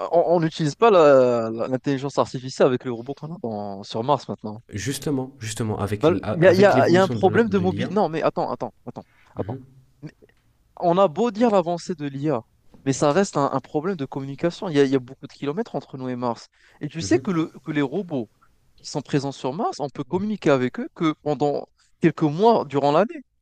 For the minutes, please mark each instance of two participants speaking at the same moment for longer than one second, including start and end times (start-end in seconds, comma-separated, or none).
6.0-7.9